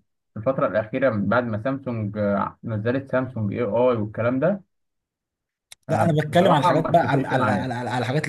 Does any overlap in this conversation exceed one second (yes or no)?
yes